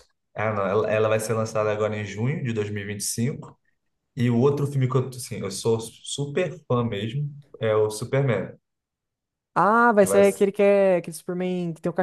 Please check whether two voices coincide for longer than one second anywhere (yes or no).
no